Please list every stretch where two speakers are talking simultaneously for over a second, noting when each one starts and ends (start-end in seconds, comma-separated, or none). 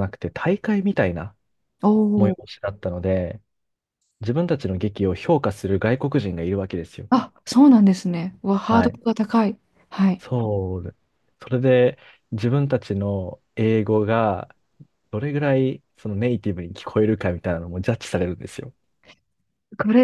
none